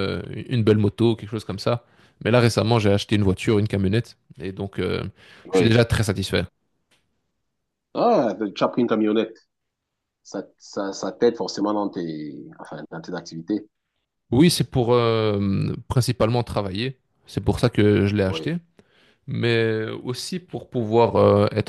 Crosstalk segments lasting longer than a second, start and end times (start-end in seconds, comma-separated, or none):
none